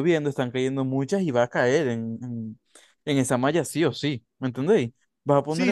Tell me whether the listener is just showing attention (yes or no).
no